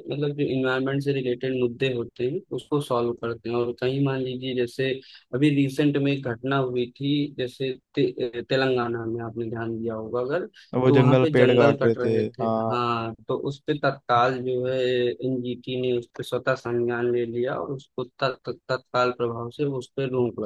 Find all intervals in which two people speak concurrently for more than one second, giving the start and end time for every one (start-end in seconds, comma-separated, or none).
10.9-12.9